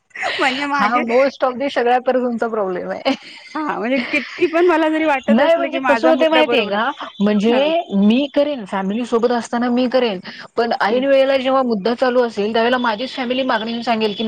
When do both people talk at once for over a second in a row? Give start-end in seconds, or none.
5.3-6.7